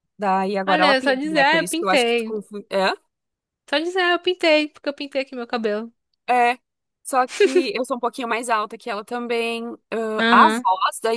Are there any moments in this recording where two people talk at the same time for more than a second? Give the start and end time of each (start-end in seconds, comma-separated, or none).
0.6-2.4